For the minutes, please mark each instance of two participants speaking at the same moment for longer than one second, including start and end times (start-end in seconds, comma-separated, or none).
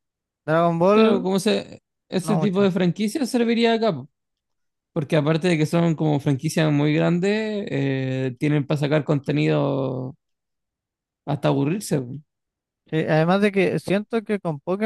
none